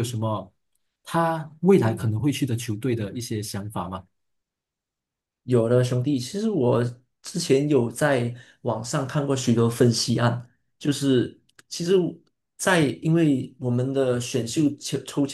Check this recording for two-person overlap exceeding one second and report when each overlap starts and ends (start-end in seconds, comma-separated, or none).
none